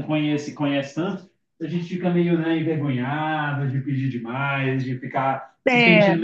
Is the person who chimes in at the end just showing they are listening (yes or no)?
yes